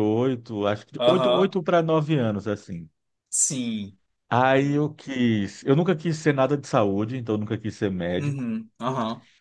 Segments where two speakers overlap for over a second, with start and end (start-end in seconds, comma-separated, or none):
none